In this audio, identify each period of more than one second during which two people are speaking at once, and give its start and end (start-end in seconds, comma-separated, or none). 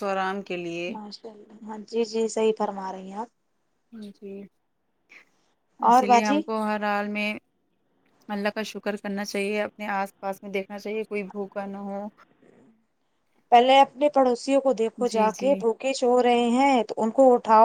none